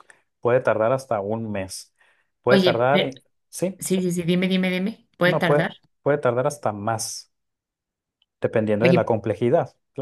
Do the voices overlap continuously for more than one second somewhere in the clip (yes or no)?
no